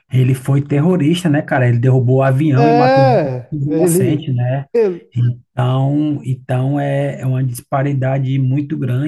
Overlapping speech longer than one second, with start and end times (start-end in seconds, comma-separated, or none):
2.6-4.3